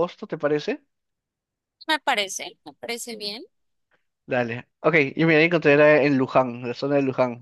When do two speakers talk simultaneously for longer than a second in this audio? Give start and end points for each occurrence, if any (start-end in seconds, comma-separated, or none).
none